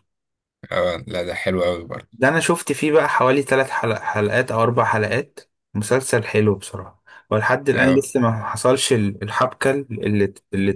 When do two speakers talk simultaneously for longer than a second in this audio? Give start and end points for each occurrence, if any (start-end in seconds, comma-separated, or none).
none